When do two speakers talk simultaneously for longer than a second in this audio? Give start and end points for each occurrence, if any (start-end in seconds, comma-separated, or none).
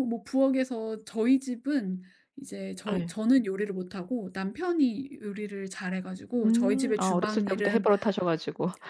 6.4-7.9